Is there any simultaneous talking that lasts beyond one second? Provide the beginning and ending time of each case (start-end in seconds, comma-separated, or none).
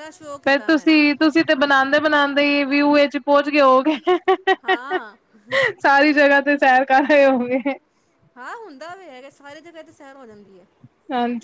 none